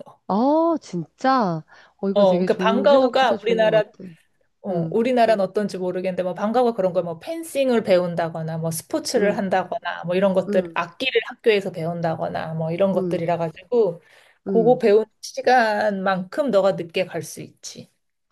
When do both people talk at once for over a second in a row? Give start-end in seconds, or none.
2.1-3.8